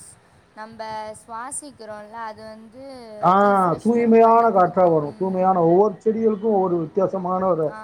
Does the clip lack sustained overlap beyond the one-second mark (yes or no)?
no